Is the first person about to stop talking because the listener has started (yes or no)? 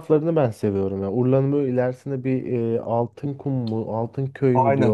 yes